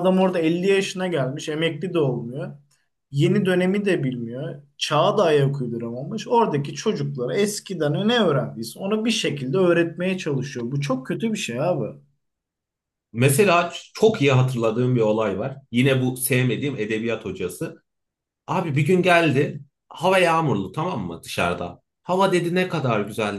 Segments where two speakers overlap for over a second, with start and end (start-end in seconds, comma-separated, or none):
none